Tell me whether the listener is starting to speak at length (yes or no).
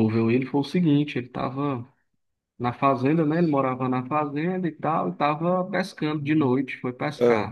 no